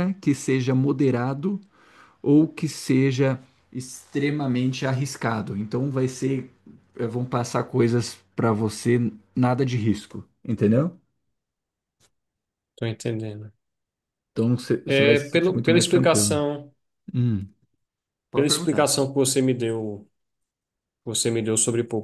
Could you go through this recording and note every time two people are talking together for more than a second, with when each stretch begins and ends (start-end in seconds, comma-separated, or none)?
14.8-16.4